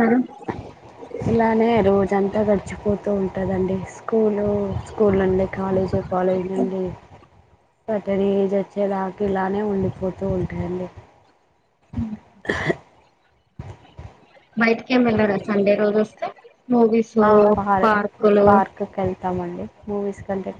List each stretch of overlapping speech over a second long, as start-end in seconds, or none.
none